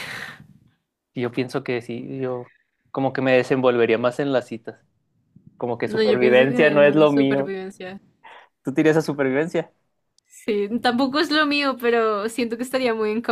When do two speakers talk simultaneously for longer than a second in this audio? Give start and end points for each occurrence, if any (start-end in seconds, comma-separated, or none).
5.8-7.5